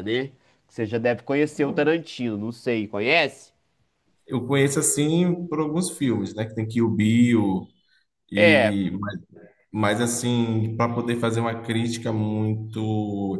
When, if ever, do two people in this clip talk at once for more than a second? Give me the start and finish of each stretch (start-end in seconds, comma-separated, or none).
none